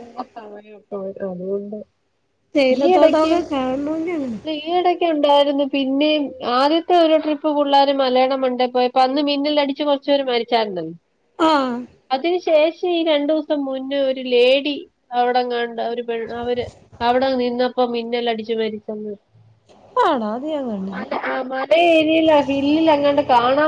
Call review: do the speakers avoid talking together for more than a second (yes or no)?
no